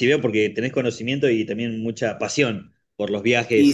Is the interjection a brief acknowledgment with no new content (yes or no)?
no